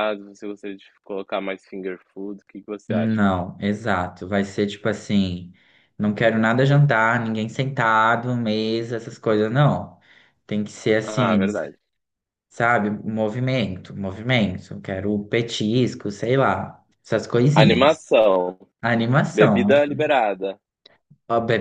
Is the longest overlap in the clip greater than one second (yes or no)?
no